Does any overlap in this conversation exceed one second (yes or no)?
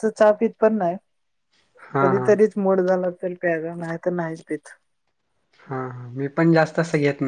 no